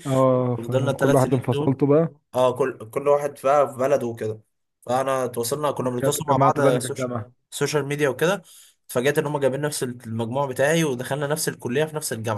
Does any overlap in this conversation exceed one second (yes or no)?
yes